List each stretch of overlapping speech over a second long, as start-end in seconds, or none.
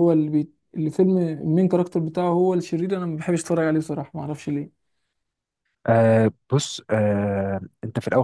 none